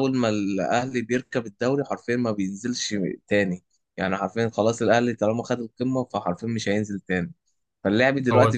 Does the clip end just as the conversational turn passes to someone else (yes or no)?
no